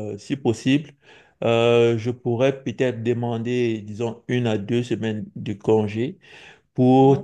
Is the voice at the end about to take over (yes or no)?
no